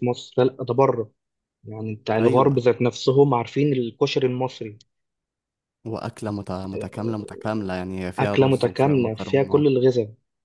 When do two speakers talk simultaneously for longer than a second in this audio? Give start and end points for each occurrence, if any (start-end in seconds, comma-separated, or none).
8.2-9.7